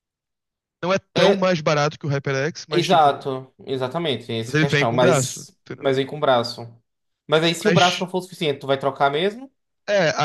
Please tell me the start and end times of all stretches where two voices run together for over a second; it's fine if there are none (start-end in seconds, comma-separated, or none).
4.5-5.9